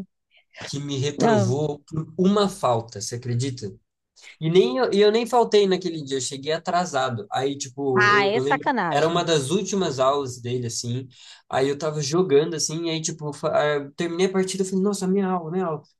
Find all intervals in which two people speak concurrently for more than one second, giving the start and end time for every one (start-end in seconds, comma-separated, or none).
8.0-9.3